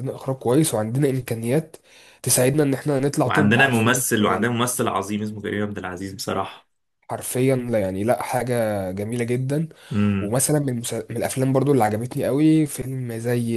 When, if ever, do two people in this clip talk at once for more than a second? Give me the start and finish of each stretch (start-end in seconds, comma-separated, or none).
3.2-4.5